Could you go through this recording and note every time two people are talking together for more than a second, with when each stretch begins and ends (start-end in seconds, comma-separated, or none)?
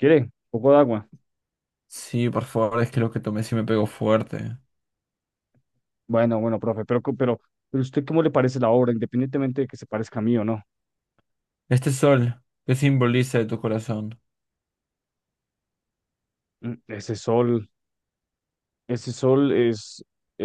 none